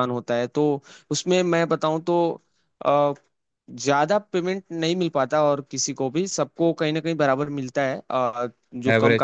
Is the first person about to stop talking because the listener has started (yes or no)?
no